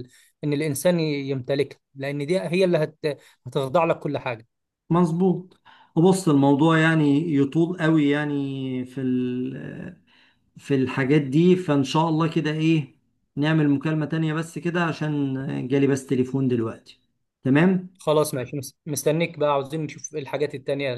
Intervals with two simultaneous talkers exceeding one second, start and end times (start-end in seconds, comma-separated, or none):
none